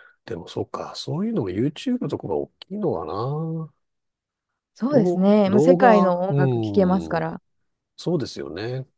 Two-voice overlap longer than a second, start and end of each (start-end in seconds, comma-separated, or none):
4.9-7.3